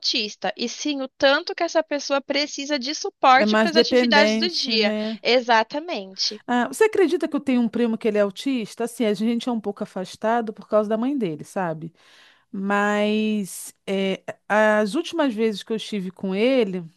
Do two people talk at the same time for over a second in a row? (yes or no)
yes